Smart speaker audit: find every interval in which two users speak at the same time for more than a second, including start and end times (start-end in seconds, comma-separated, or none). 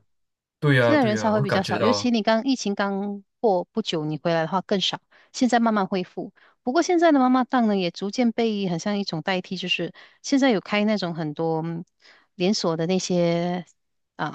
0.8-2.1